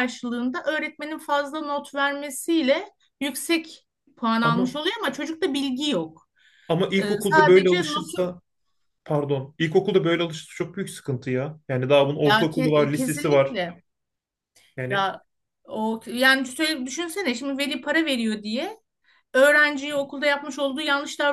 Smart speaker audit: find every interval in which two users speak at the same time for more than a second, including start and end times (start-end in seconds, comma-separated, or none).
7.0-8.3, 12.2-13.6